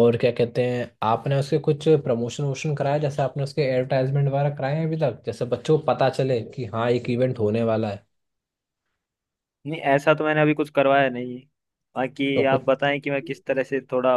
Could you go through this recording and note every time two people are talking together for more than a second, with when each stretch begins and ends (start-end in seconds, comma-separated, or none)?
none